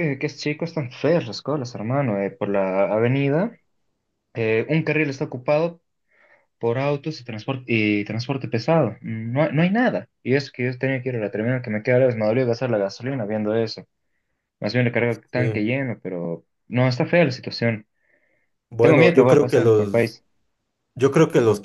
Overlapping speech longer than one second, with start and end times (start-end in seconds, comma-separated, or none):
18.8-20.2